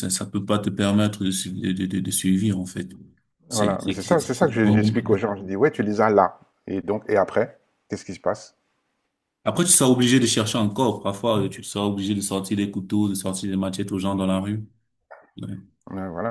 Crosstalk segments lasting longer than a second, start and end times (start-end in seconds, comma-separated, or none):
3.5-4.9